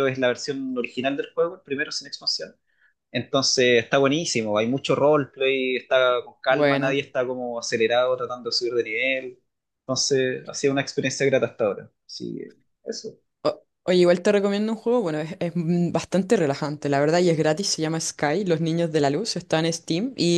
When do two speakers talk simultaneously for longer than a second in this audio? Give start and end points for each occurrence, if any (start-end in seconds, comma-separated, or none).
none